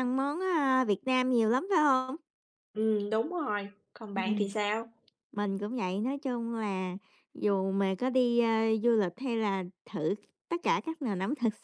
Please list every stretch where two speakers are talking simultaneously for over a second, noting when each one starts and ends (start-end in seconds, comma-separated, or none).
none